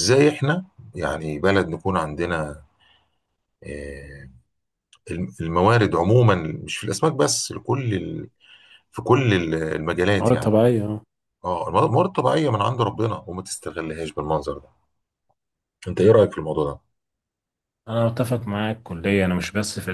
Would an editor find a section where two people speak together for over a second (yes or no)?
no